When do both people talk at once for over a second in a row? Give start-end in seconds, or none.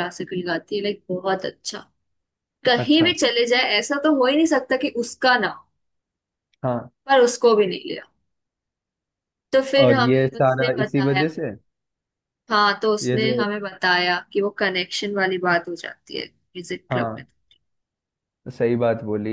9.8-11.2